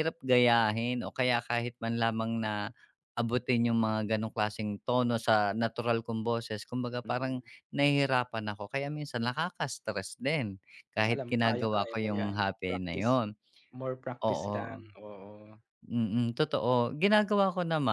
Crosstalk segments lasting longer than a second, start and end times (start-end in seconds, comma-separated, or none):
11.1-13.1